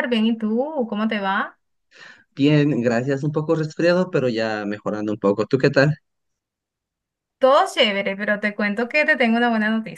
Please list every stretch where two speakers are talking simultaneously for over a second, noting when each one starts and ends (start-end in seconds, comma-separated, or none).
none